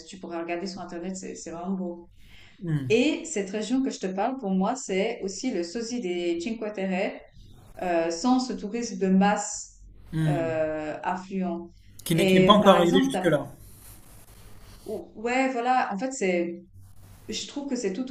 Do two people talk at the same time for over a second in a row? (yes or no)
yes